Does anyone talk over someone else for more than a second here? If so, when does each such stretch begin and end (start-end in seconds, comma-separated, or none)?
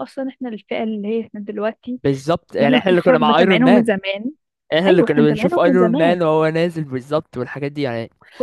2.6-3.9, 4.9-6.2